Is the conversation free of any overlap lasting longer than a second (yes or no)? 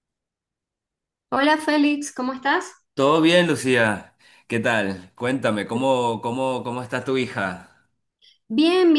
yes